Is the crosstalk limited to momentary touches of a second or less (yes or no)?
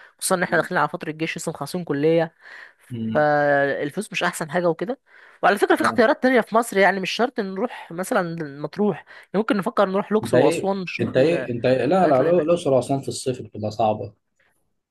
no